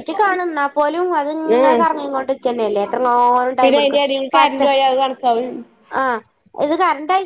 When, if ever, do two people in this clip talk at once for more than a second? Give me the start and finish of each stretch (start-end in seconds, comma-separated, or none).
none